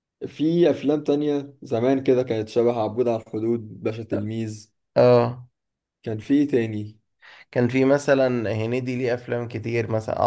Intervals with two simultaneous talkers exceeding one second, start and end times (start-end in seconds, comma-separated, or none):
none